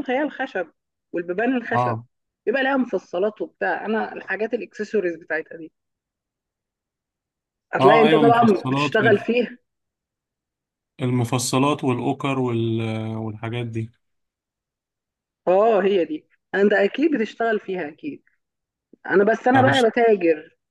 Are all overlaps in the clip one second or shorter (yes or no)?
no